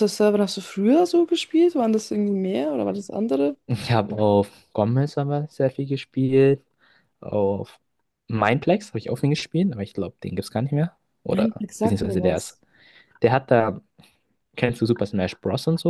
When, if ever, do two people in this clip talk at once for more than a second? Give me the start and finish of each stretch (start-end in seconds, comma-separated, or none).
11.3-12.6